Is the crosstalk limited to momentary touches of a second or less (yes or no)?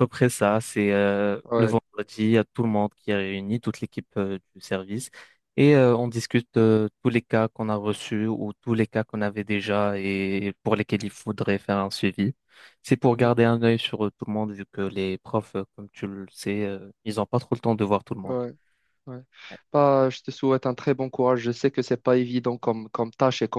yes